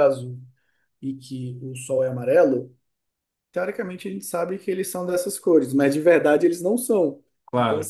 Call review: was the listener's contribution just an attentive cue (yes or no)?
yes